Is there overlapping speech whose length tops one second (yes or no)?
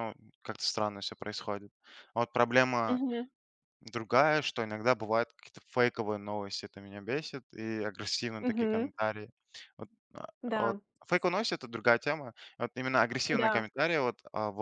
no